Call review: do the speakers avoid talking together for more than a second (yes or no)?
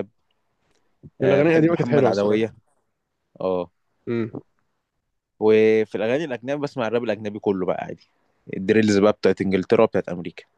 no